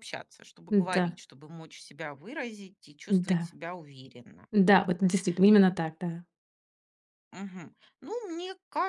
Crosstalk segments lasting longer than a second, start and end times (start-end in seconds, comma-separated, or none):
none